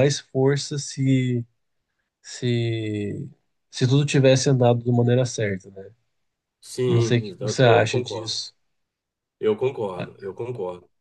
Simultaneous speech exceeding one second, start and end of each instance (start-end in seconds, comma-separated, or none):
6.9-8.4